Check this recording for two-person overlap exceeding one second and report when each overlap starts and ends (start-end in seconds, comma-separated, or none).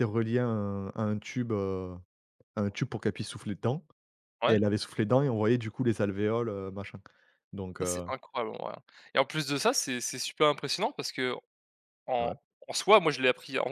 none